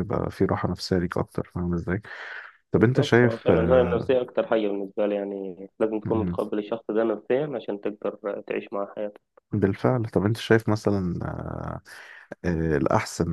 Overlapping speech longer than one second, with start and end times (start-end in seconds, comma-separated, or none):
2.7-4.1